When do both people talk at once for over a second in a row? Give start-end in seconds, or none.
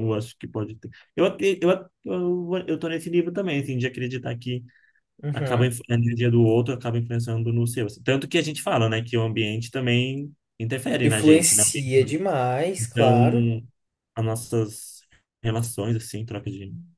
none